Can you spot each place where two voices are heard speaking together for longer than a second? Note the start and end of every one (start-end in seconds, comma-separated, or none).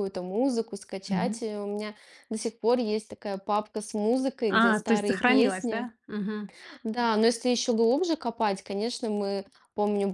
4.5-5.9